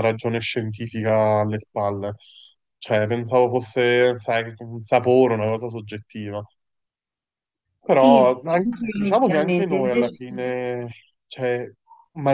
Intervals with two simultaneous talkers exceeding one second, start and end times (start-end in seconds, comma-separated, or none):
7.8-10.2